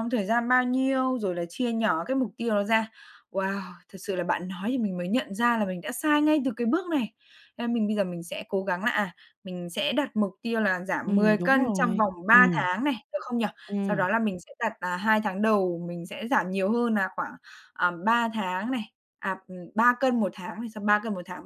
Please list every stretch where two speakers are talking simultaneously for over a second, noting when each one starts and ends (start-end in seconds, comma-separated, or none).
11.0-12.5